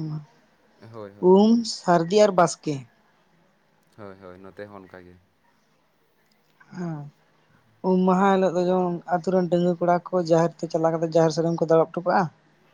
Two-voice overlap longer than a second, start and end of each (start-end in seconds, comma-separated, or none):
none